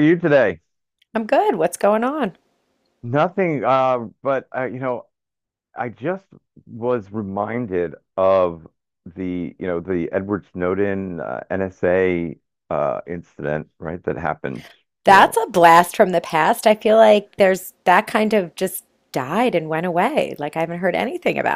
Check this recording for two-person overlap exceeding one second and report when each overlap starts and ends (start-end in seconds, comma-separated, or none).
none